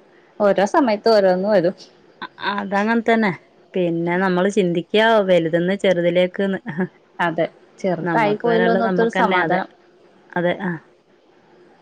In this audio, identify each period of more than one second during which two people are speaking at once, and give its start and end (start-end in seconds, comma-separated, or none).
8.1-9.6